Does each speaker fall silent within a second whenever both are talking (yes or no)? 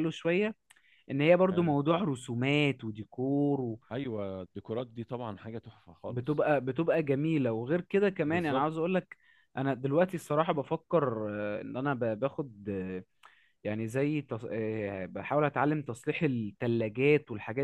yes